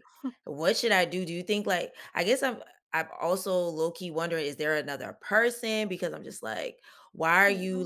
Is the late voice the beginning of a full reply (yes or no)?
no